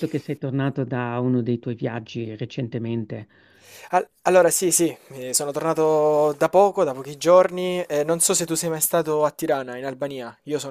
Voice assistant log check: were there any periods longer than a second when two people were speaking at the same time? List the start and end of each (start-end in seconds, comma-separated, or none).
none